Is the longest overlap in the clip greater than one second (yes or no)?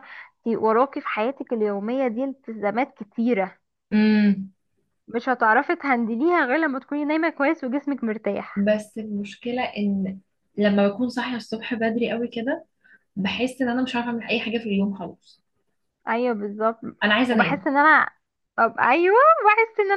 no